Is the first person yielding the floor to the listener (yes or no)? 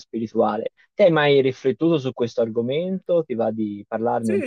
yes